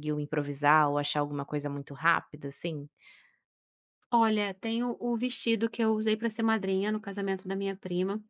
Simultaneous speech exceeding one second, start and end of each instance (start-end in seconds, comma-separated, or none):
none